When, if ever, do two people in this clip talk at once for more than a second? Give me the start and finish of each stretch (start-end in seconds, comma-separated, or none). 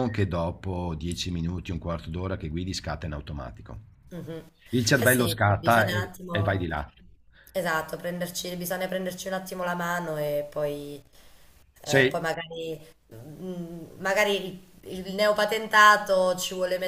5.0-6.7